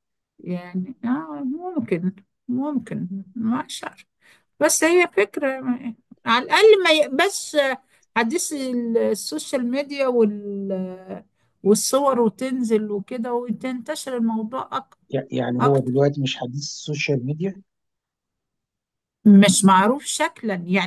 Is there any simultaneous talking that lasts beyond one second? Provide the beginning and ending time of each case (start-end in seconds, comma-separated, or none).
none